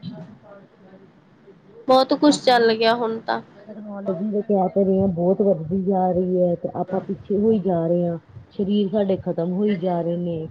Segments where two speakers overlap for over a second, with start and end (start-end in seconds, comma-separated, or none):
none